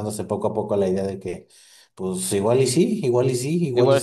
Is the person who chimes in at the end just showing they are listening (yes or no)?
no